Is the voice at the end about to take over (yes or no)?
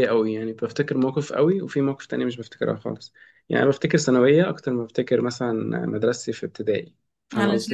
yes